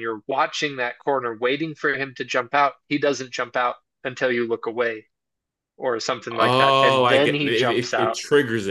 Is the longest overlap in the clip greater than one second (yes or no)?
yes